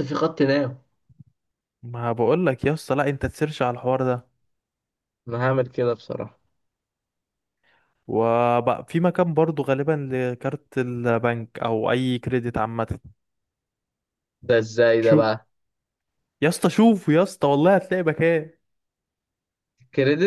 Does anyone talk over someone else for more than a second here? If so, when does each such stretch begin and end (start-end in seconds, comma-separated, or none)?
none